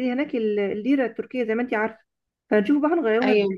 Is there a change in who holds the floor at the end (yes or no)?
no